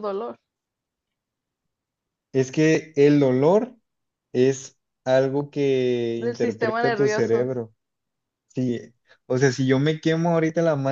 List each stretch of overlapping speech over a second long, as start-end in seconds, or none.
6.2-7.5